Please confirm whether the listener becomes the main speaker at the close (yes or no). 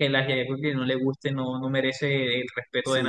yes